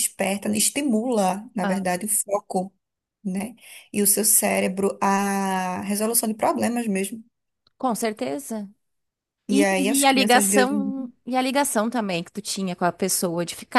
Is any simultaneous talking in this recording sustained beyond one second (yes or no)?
yes